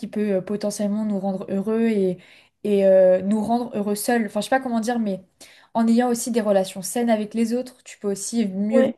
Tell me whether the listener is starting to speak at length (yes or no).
no